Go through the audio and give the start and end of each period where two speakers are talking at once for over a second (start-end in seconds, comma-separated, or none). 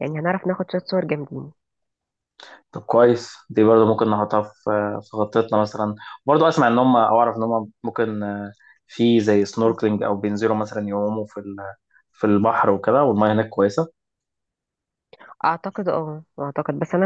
none